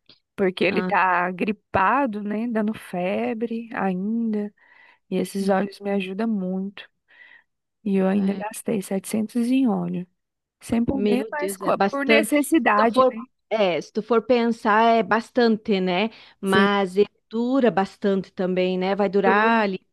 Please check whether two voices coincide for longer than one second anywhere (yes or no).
yes